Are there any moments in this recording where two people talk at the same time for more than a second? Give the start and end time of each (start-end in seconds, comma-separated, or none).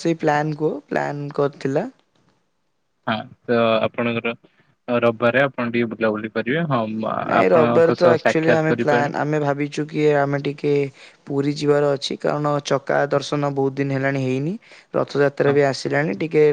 7.3-9.1